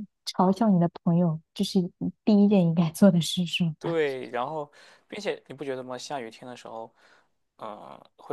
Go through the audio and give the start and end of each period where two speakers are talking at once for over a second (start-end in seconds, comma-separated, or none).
none